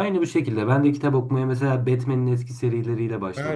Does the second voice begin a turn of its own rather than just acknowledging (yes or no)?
yes